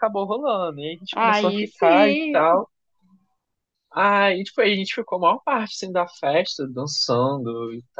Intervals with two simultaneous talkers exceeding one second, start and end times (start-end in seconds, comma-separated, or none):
1.1-2.6